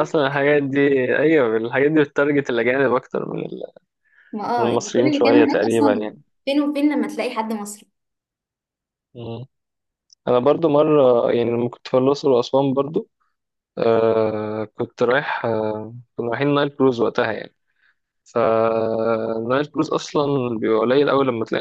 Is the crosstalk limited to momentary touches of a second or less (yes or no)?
no